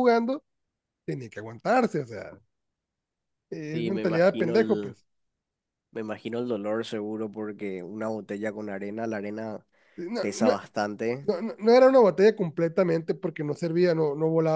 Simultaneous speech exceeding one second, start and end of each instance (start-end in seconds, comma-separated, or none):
3.7-5.0